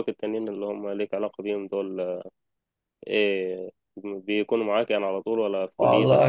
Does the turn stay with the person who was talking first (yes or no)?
no